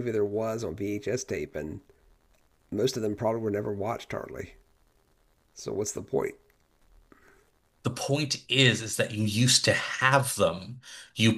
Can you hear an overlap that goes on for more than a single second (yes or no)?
no